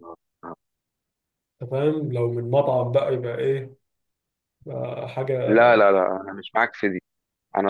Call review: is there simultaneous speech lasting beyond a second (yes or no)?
no